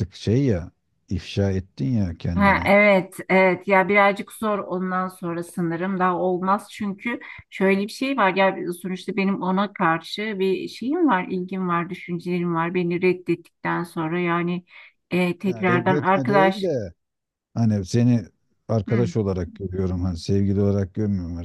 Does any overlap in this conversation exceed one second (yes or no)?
yes